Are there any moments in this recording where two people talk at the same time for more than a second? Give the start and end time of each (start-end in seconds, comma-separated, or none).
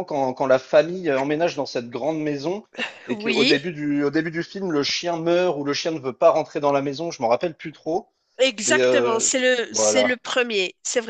8.6-10.2